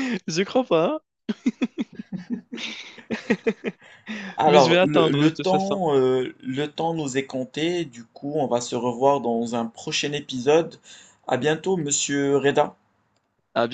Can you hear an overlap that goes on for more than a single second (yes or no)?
yes